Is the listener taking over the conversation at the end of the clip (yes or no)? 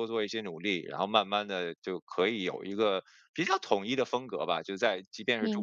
no